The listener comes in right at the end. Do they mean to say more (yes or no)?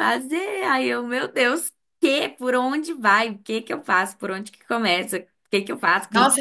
yes